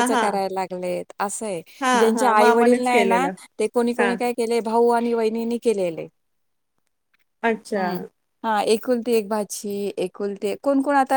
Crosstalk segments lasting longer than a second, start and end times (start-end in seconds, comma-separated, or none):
2.0-3.3